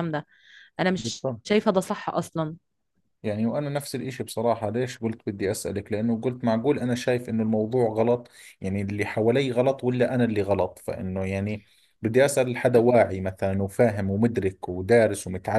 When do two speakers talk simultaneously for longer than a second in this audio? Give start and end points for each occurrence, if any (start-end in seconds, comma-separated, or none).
none